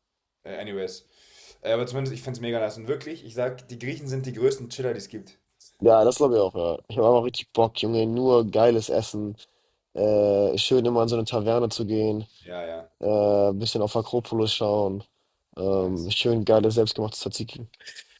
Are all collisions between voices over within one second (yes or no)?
yes